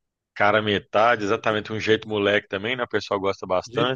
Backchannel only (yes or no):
no